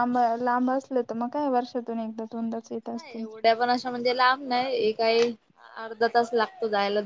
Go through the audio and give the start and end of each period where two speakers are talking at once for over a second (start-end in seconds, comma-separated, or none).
none